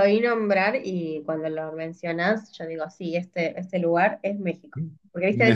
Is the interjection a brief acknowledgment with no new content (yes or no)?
yes